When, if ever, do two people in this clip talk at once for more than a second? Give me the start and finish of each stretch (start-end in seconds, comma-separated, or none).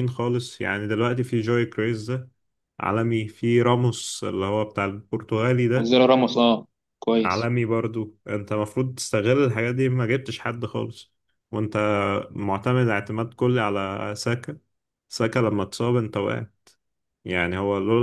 none